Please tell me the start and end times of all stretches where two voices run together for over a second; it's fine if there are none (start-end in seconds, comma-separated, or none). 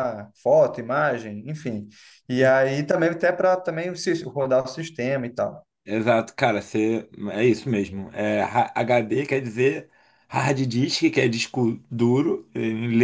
none